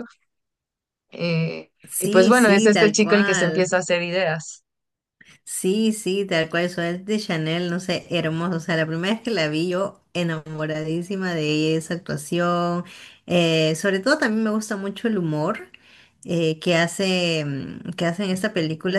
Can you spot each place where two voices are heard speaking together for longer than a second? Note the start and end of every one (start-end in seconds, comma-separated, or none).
1.9-3.7